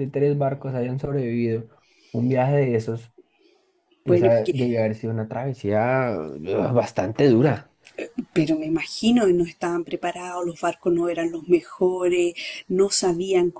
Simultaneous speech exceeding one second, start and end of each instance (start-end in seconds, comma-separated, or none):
none